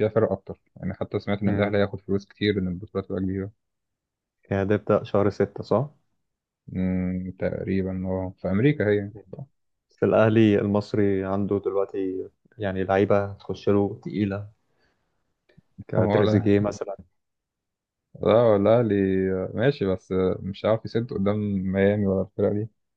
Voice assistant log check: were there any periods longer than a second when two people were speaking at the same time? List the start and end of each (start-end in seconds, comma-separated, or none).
none